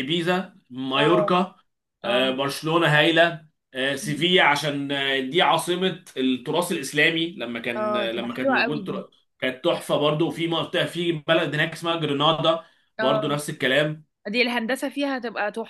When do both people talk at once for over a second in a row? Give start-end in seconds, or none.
7.8-9.0